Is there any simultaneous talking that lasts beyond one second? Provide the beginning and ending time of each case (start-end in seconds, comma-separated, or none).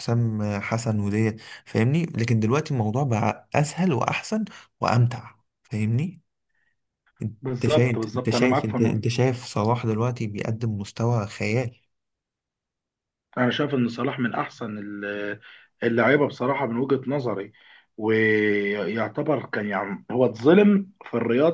7.5-9.2